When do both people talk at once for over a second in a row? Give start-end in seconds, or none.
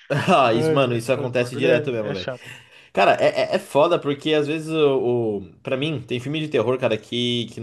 0.5-2.3